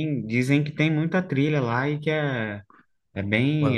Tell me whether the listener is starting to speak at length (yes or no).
yes